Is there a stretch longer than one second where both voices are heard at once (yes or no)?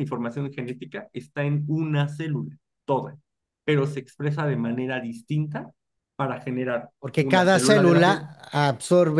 yes